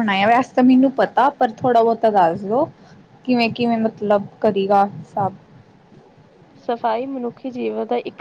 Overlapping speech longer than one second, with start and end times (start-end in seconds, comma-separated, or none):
none